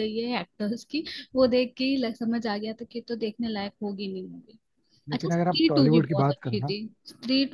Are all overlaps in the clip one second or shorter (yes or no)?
no